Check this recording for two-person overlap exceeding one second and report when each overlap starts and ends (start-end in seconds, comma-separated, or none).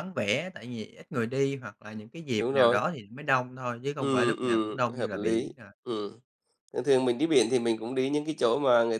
4.0-5.7